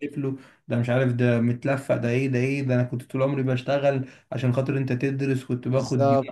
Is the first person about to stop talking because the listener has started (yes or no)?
no